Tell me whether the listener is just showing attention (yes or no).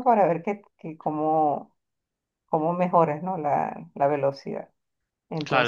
no